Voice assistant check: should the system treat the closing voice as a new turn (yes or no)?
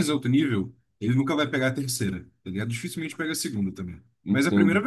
yes